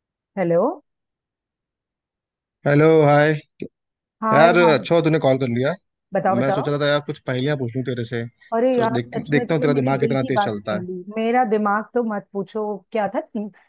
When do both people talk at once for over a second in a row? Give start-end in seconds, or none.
8.7-10.8